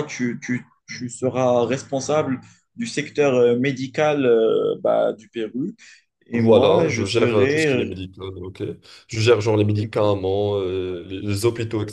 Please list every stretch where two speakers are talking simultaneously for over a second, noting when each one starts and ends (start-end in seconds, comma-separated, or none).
6.3-7.9